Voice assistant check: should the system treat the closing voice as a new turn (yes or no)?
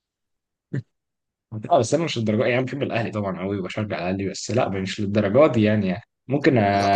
no